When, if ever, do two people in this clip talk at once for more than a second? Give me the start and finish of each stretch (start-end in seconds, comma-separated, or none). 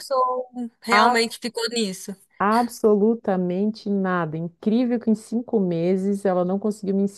none